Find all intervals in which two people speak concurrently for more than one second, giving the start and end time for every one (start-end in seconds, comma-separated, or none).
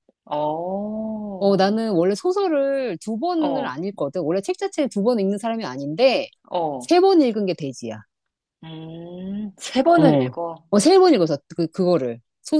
none